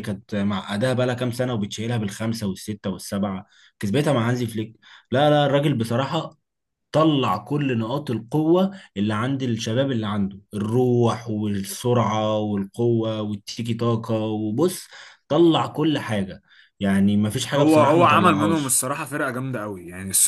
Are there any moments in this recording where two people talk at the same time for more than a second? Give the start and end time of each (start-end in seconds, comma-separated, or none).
17.6-18.8